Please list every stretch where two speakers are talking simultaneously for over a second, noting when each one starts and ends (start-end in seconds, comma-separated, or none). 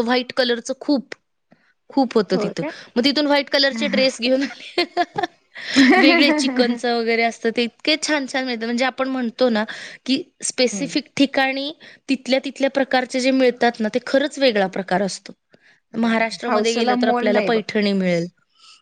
16.0-17.6